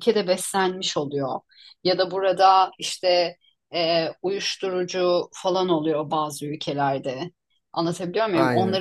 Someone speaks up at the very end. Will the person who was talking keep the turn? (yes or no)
yes